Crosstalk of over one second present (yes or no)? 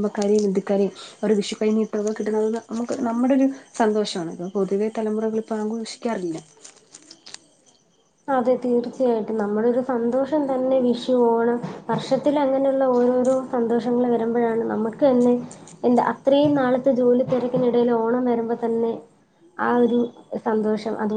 no